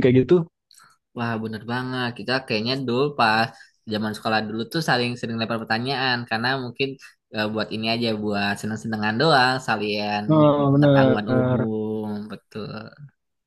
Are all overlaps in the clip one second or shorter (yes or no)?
no